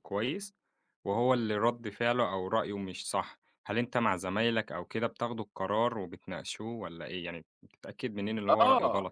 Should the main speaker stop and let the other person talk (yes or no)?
yes